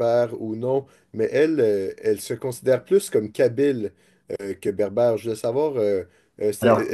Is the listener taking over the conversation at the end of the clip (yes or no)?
no